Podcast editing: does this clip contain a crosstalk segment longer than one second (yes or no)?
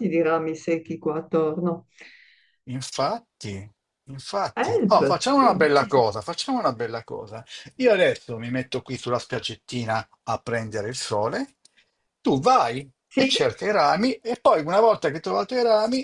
yes